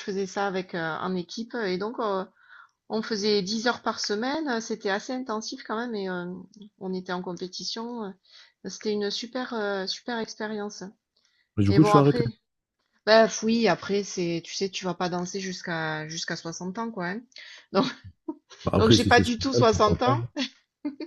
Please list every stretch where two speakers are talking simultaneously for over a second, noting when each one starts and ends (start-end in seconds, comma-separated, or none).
18.8-20.2